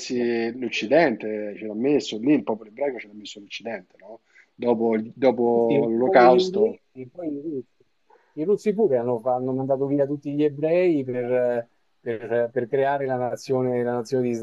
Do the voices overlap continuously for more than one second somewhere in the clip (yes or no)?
yes